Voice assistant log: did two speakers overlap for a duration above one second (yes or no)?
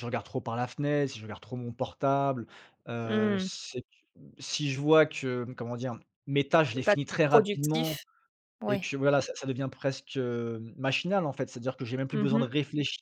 yes